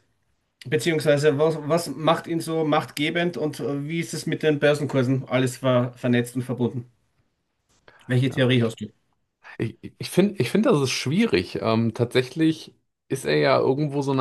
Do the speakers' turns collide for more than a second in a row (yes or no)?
no